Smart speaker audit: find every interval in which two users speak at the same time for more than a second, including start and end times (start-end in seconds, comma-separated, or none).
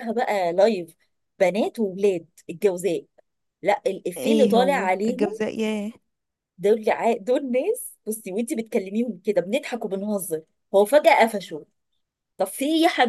4.2-5.4